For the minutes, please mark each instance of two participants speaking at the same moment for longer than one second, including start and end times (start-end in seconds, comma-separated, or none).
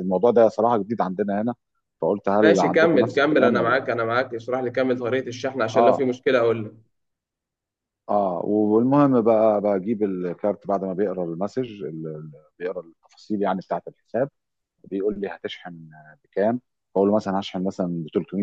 2.4-3.9